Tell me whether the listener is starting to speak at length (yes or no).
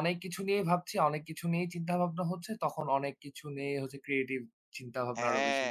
yes